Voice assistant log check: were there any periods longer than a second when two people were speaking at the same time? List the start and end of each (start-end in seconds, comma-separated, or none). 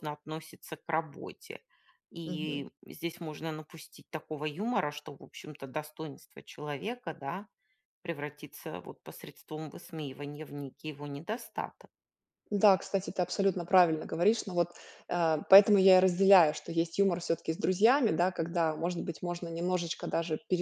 none